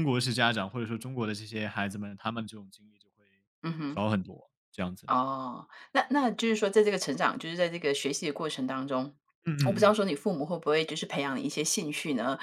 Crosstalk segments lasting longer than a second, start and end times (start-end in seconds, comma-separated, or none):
none